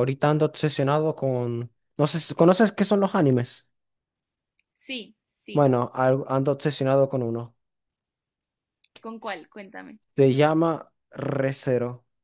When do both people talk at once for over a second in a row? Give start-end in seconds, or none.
none